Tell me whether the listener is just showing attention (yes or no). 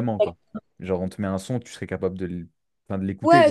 no